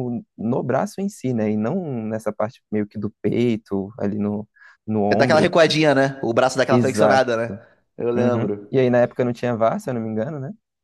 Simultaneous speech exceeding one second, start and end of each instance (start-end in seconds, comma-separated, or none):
none